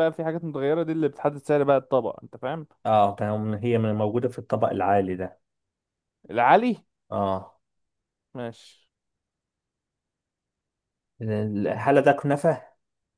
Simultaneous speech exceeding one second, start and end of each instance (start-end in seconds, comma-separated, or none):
none